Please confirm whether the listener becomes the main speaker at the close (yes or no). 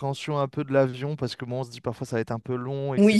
yes